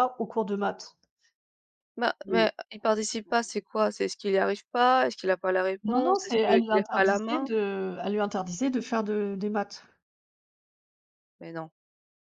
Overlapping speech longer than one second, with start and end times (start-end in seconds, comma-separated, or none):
5.8-7.5